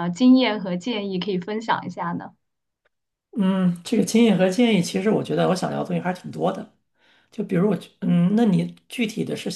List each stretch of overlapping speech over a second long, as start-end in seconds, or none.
none